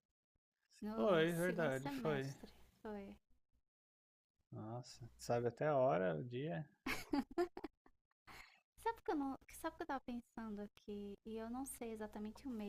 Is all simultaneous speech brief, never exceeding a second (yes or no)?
no